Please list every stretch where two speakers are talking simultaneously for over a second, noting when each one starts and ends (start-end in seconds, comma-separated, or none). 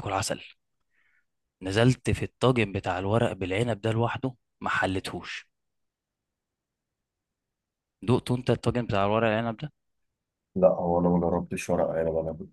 none